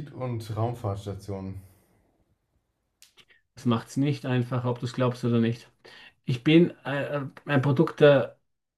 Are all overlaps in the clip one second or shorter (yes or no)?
yes